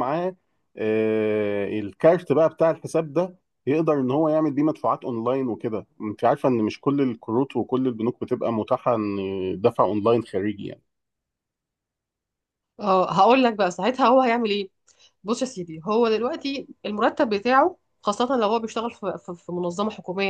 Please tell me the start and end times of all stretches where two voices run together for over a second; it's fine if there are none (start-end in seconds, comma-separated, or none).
none